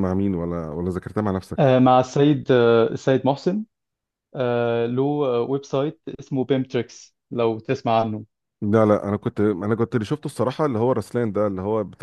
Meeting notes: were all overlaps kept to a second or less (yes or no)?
yes